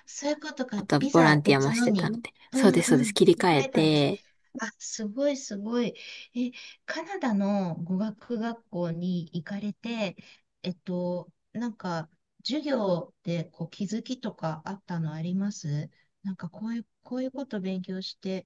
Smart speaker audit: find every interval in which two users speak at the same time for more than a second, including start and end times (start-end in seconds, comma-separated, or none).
0.7-4.1